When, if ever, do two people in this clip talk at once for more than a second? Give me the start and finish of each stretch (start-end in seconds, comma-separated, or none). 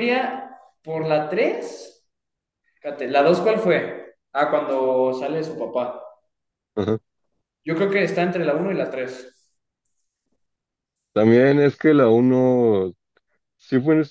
none